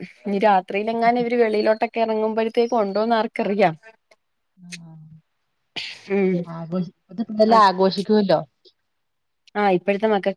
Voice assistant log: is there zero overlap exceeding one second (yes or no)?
yes